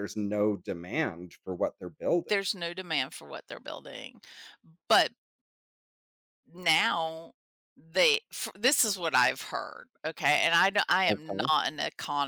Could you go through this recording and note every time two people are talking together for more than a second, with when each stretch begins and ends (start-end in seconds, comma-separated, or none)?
none